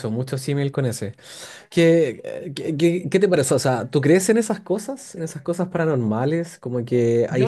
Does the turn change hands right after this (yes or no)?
yes